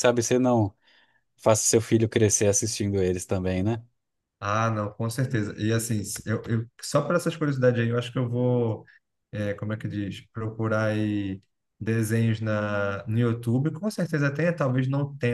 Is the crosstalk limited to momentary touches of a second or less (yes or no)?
yes